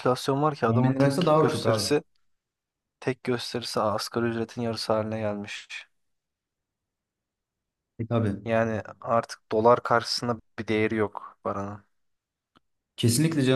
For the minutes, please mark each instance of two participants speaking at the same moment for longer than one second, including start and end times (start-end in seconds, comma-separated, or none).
0.7-2.0